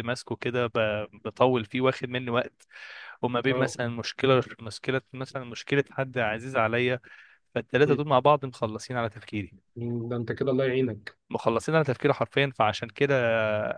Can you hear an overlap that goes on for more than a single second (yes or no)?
no